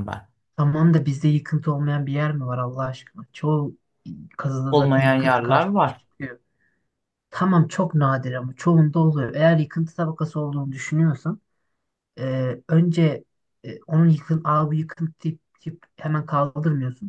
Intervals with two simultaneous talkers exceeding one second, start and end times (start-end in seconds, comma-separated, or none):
4.7-6.0